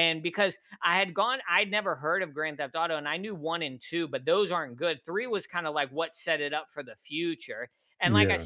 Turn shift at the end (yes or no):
no